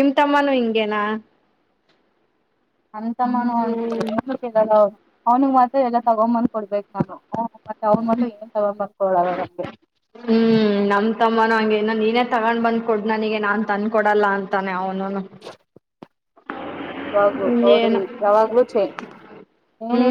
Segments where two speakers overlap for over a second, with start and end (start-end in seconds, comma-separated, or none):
none